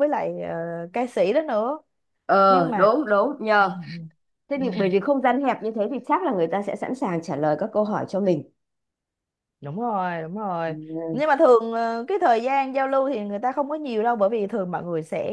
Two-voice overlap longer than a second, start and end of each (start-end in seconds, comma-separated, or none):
none